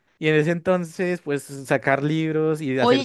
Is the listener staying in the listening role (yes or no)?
no